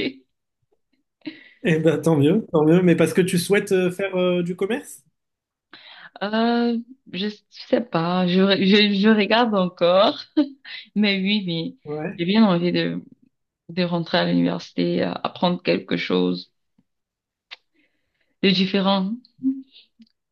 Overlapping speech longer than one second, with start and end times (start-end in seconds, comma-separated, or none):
none